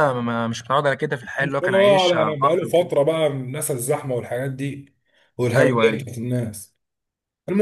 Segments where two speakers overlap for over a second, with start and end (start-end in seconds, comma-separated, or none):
1.4-2.9